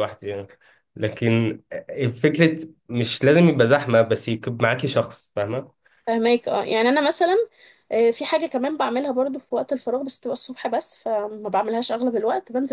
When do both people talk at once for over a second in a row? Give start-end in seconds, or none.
none